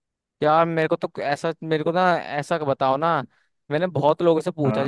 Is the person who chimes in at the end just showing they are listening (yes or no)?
yes